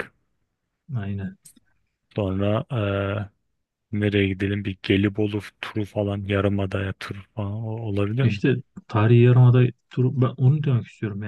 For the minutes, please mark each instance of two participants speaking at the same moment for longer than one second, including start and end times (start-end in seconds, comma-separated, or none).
none